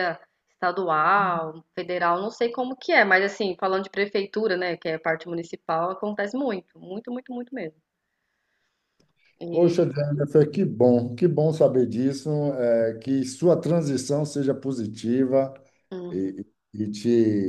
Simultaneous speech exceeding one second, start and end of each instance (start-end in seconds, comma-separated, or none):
none